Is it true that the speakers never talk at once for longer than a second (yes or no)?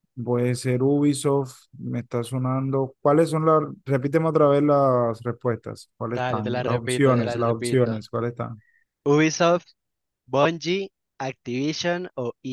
no